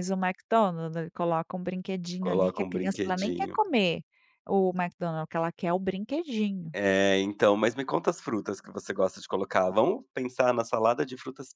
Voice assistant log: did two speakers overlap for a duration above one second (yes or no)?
yes